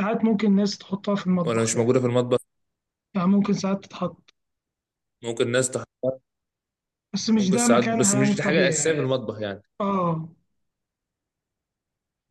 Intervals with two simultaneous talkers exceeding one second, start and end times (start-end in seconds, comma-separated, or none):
7.4-9.1